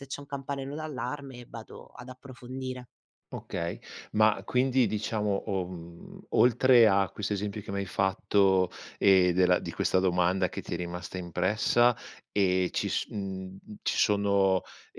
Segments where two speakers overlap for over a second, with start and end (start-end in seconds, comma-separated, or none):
none